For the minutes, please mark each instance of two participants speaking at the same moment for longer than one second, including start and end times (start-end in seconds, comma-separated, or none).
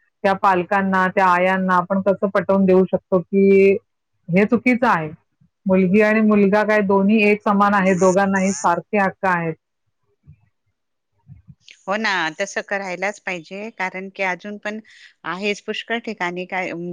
none